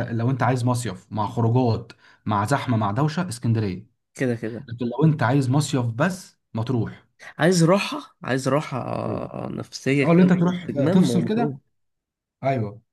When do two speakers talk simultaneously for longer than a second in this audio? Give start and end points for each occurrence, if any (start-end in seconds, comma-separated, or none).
10.0-11.5